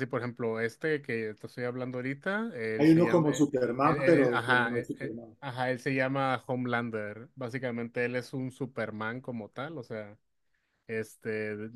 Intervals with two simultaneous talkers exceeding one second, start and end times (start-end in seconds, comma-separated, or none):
2.8-5.4